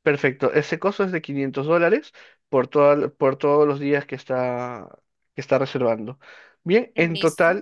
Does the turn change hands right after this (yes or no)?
no